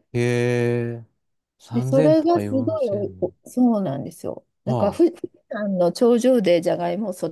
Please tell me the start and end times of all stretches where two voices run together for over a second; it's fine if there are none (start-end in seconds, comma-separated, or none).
1.7-3.3